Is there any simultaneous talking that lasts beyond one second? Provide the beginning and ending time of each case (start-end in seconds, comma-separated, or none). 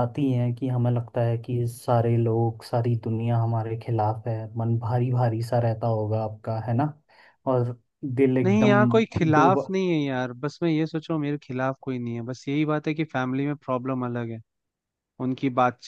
none